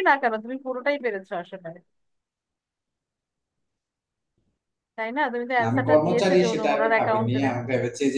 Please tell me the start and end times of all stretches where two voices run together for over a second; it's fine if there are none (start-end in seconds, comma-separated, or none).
5.6-7.4